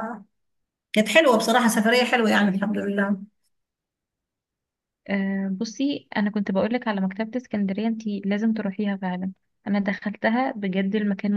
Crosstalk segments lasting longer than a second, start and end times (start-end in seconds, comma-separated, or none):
none